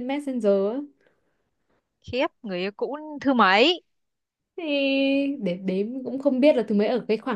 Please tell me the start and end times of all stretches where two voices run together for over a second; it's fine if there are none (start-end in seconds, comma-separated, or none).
none